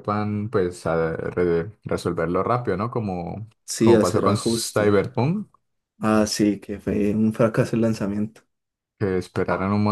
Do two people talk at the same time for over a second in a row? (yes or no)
yes